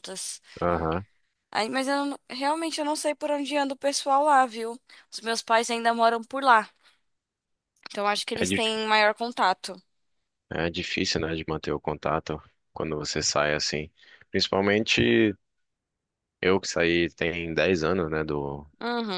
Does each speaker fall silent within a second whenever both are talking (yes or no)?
yes